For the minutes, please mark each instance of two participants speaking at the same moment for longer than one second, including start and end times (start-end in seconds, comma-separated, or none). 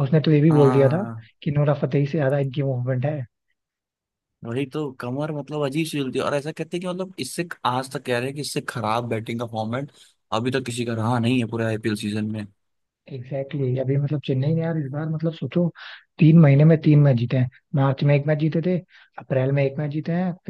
none